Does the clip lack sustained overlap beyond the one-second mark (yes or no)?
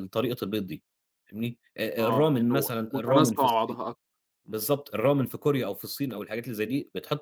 no